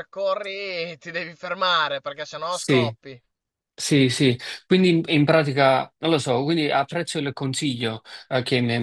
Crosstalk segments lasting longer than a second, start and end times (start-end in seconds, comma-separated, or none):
none